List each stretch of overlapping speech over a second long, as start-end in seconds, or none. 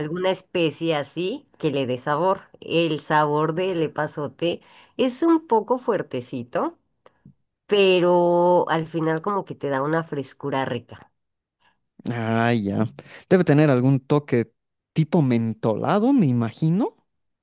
none